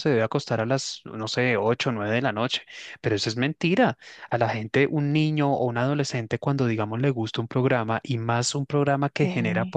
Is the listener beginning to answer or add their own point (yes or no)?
no